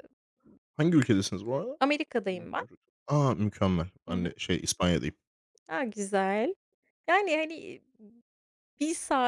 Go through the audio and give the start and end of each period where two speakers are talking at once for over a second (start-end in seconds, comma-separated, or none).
none